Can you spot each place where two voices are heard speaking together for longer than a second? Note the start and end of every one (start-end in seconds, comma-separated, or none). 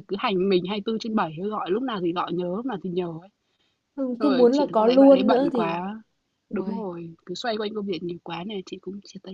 4.2-5.8